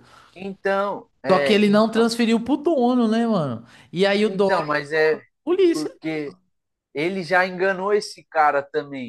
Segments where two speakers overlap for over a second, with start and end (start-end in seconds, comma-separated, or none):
none